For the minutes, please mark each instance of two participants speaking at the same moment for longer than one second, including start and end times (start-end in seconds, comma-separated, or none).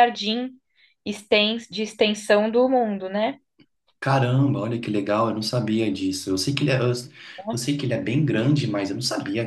none